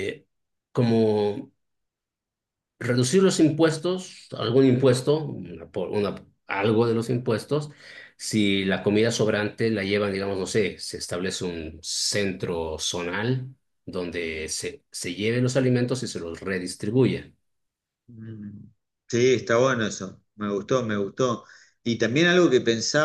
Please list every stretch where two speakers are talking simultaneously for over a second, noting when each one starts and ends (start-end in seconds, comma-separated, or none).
none